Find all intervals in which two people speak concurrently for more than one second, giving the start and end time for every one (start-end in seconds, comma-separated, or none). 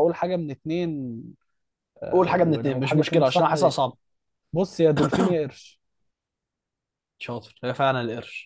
2.1-3.5